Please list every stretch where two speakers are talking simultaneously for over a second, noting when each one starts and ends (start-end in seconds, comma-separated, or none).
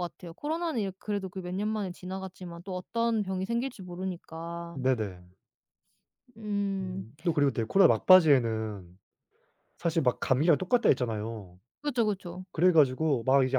none